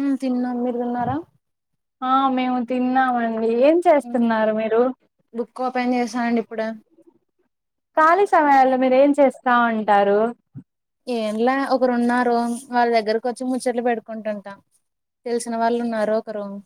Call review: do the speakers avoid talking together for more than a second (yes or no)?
yes